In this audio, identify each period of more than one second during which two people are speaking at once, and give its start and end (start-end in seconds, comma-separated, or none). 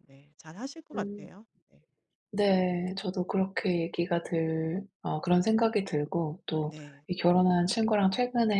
none